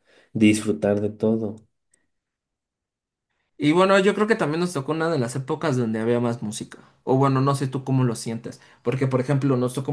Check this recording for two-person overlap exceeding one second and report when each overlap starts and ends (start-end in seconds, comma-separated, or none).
none